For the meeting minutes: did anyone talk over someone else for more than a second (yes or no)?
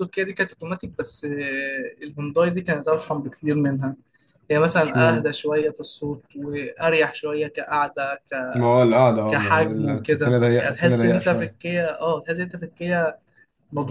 yes